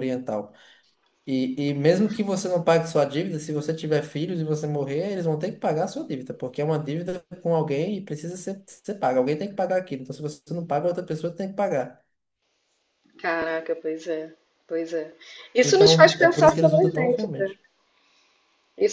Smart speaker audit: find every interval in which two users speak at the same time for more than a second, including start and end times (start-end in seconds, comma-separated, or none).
15.6-17.5